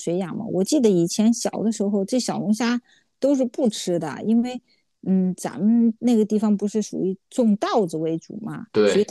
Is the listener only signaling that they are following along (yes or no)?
yes